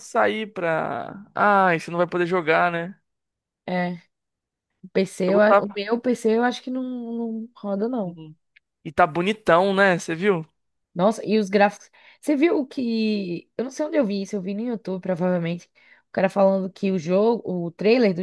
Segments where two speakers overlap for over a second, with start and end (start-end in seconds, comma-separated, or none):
none